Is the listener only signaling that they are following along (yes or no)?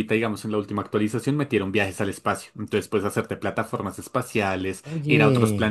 yes